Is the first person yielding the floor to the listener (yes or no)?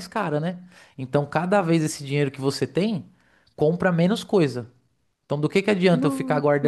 no